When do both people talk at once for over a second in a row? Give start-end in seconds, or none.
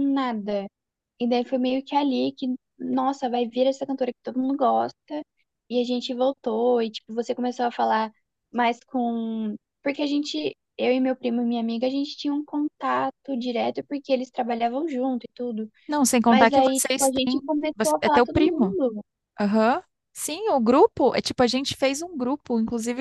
16.3-18.8